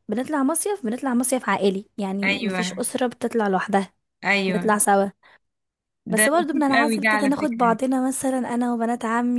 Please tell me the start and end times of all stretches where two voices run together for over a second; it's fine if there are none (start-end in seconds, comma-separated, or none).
6.2-7.8